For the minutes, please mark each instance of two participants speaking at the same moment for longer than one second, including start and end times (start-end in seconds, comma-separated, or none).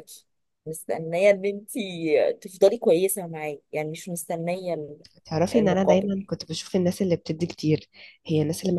none